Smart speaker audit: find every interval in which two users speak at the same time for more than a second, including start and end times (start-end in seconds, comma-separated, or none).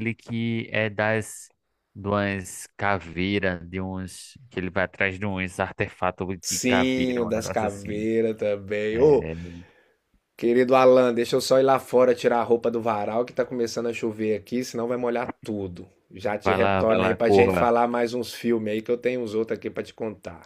6.4-8.1, 16.4-17.7